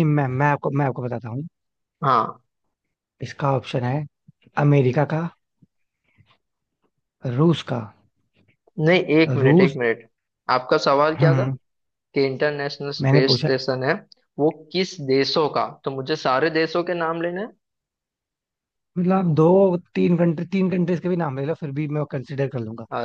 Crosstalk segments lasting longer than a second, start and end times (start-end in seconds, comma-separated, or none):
none